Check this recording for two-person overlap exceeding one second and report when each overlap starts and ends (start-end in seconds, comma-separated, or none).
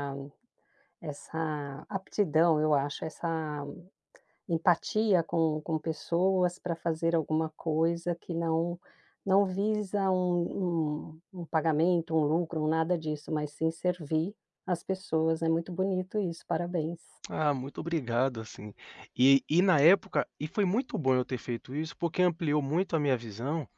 none